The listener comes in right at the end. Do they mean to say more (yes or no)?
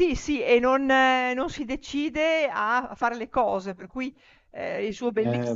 no